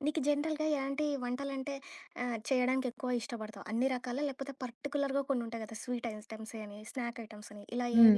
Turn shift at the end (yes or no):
yes